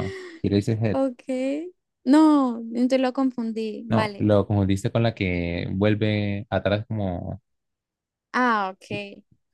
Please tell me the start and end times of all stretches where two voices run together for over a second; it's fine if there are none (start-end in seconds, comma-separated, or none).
none